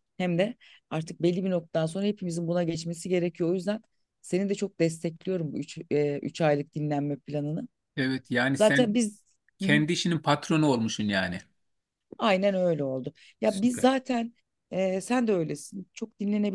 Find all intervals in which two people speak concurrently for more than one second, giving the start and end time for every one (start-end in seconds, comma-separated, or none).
none